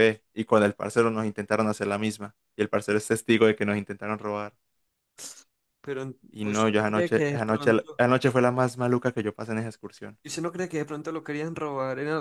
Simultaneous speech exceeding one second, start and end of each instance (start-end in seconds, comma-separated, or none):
6.3-8.0